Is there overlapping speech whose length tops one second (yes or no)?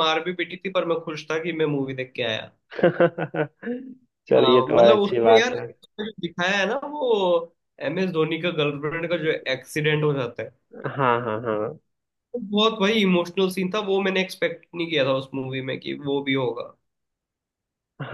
yes